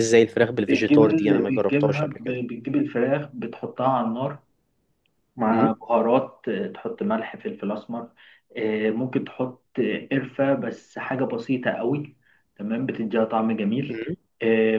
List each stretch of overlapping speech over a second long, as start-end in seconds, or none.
0.7-2.4